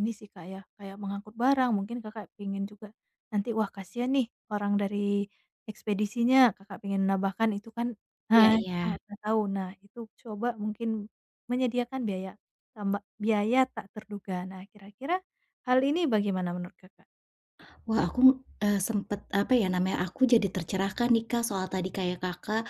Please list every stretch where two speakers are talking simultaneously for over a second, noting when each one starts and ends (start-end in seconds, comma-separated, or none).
none